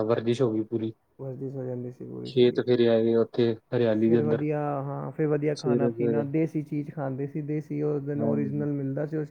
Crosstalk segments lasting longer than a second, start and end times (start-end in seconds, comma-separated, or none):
none